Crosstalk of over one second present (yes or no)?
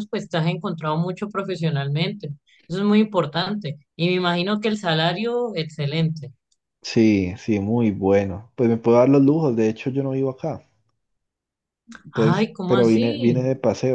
yes